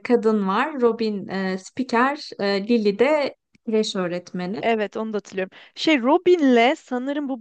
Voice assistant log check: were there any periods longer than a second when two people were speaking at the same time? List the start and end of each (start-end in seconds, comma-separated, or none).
none